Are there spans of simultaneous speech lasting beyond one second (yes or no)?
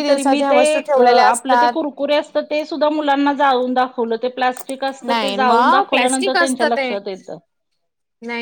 yes